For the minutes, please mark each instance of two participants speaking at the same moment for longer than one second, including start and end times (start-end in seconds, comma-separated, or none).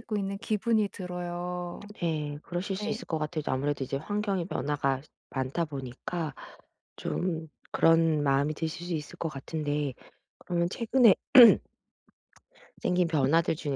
none